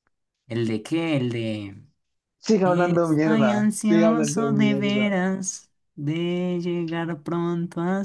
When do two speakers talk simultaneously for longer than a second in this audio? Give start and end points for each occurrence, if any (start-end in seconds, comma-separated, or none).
2.6-5.2